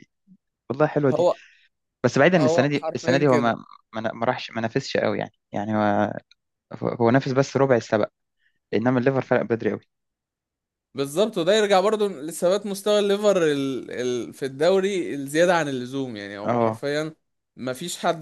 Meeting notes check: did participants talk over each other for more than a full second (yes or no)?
yes